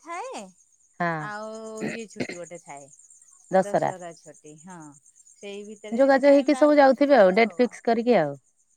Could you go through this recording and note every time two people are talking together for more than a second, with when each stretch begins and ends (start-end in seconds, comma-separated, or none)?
6.0-7.7